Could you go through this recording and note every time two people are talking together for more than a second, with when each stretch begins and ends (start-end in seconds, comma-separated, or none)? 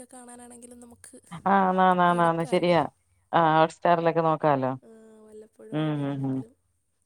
none